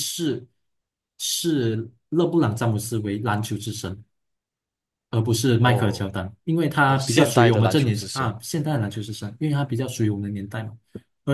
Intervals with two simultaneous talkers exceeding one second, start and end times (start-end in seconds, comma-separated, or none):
6.8-8.4